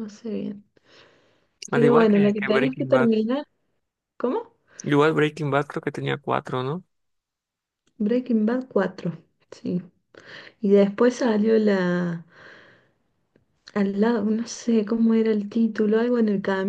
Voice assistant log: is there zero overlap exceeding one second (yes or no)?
no